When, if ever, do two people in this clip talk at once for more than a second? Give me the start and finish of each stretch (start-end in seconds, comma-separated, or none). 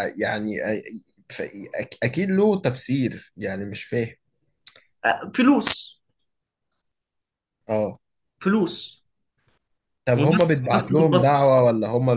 10.2-11.5